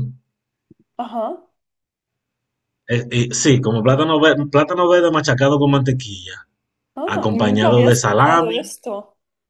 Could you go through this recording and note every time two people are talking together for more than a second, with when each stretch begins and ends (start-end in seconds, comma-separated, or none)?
7.1-8.7